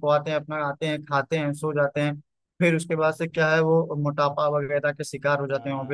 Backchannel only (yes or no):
no